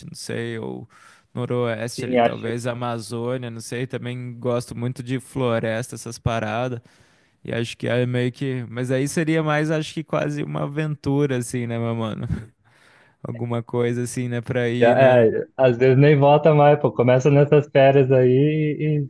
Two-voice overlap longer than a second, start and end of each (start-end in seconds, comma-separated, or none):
none